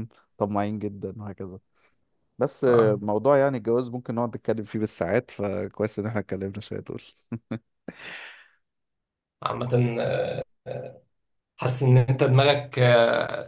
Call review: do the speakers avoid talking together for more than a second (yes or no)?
yes